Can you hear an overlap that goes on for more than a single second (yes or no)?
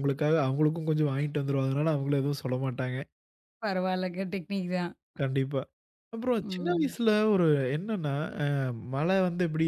no